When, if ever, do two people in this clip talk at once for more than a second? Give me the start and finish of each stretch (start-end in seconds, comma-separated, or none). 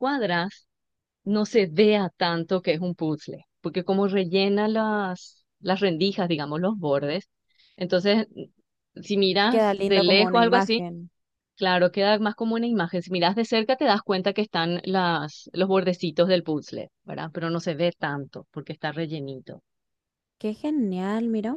9.5-10.8